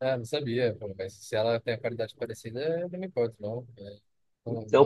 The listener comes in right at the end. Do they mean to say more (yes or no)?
yes